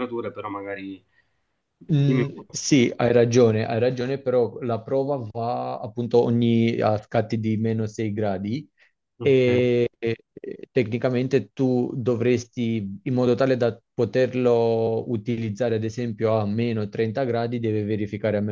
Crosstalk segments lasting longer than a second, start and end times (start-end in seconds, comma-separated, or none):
none